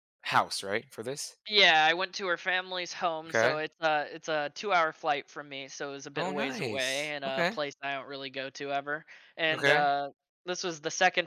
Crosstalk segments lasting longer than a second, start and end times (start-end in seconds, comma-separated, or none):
6.2-7.6